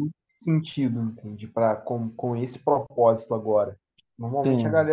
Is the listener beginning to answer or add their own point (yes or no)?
no